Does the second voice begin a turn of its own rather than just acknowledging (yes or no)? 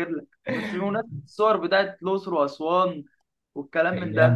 no